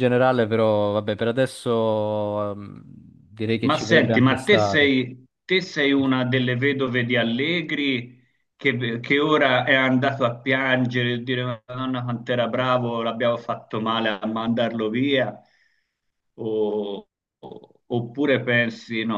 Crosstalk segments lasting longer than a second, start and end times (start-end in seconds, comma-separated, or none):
3.6-4.9